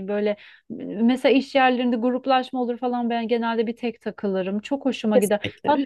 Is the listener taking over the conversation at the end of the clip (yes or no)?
no